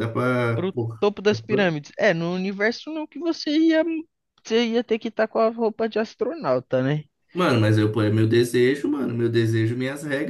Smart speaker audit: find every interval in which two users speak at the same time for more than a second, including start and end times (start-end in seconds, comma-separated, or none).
none